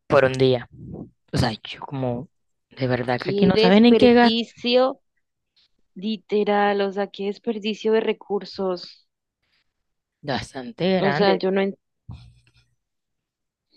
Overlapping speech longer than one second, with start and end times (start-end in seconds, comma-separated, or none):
3.2-4.5